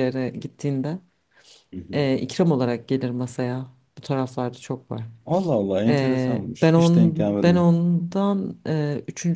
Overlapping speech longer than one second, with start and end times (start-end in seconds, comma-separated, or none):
5.9-7.7